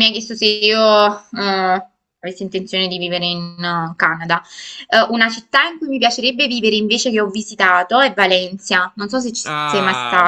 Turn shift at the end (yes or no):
yes